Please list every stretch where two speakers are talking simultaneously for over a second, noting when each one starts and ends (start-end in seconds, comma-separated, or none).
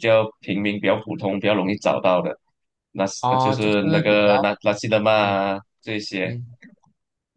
3.2-4.6